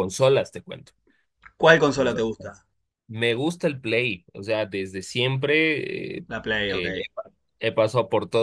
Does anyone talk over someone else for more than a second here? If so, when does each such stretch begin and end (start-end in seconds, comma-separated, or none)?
none